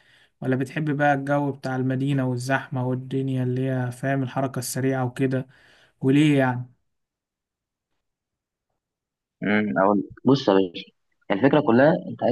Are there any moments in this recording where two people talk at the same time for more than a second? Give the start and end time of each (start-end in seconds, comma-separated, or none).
none